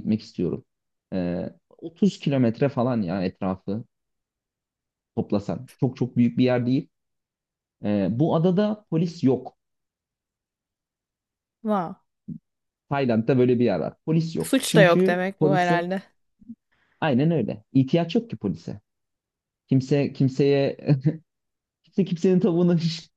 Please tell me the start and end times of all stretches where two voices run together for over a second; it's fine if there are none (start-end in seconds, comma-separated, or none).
14.4-15.8